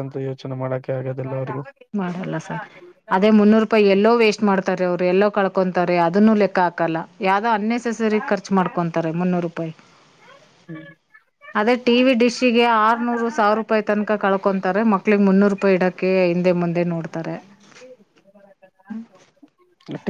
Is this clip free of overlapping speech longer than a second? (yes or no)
yes